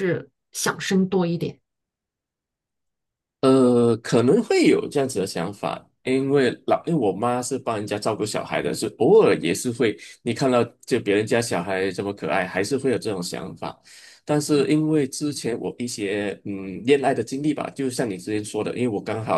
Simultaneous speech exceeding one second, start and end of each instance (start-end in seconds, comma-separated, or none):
none